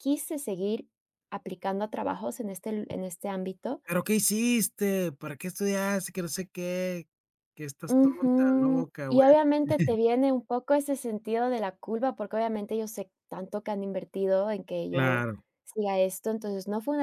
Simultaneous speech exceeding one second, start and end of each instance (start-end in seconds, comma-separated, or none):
7.9-9.2